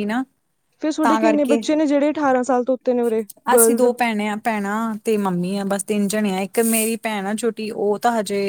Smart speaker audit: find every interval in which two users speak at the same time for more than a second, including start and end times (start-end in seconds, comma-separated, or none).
none